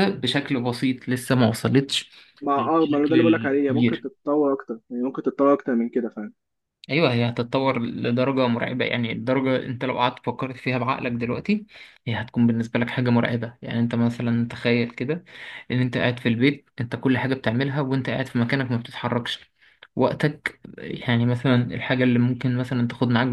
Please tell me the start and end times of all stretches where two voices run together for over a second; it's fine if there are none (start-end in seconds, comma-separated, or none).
2.6-4.0